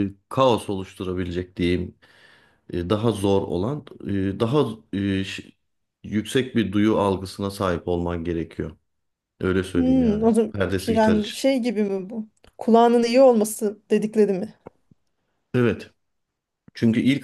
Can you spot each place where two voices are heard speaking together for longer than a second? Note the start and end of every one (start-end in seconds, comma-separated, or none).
9.7-11.4